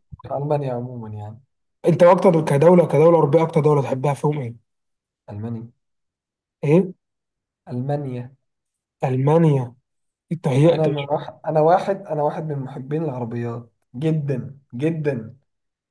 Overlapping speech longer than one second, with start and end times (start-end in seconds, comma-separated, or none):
none